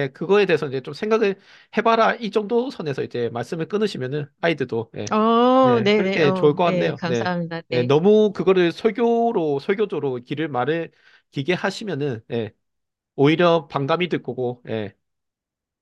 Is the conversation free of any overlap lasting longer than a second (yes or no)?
no